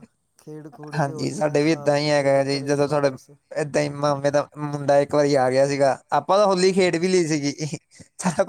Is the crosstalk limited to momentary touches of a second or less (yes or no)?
no